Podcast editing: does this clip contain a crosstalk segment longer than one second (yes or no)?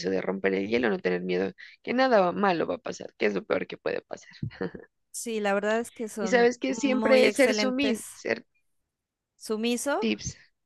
yes